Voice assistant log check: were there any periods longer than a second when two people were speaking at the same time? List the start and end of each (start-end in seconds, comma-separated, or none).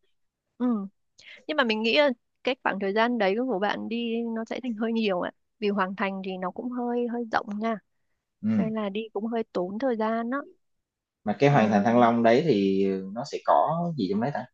none